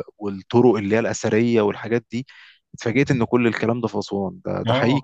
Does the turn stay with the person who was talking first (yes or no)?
no